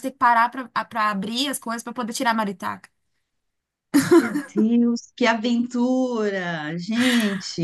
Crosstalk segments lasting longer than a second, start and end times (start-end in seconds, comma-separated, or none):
none